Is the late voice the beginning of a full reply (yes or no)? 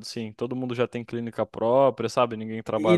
yes